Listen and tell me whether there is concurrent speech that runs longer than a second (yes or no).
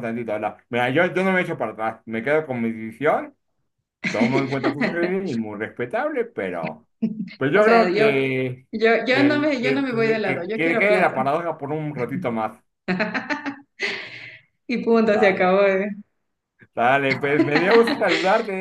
yes